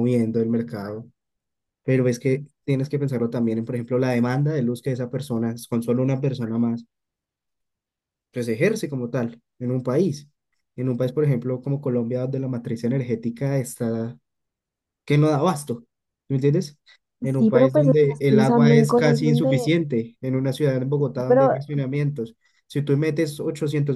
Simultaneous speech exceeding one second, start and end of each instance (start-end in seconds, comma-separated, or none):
17.4-19.7